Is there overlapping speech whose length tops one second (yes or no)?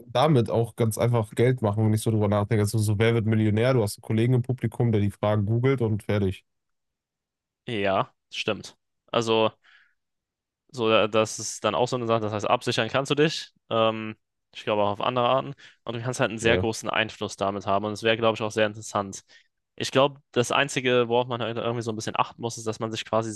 no